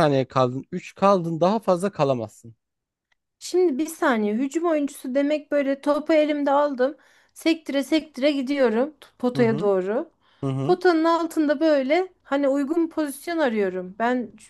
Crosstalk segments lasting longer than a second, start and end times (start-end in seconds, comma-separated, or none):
none